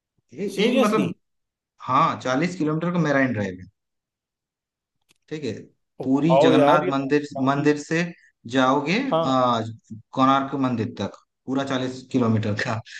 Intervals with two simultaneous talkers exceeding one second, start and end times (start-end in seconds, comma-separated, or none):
6.0-7.7